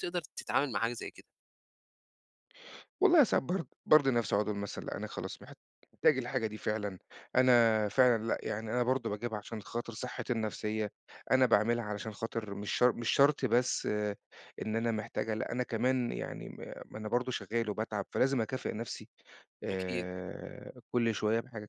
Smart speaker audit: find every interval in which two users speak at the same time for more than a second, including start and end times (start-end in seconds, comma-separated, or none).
none